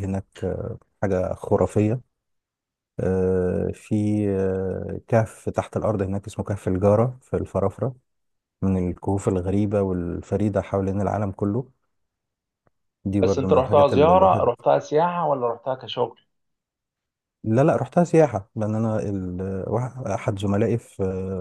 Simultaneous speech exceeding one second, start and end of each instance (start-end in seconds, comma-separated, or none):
13.2-14.5